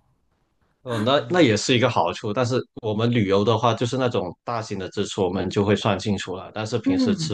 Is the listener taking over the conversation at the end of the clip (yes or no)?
no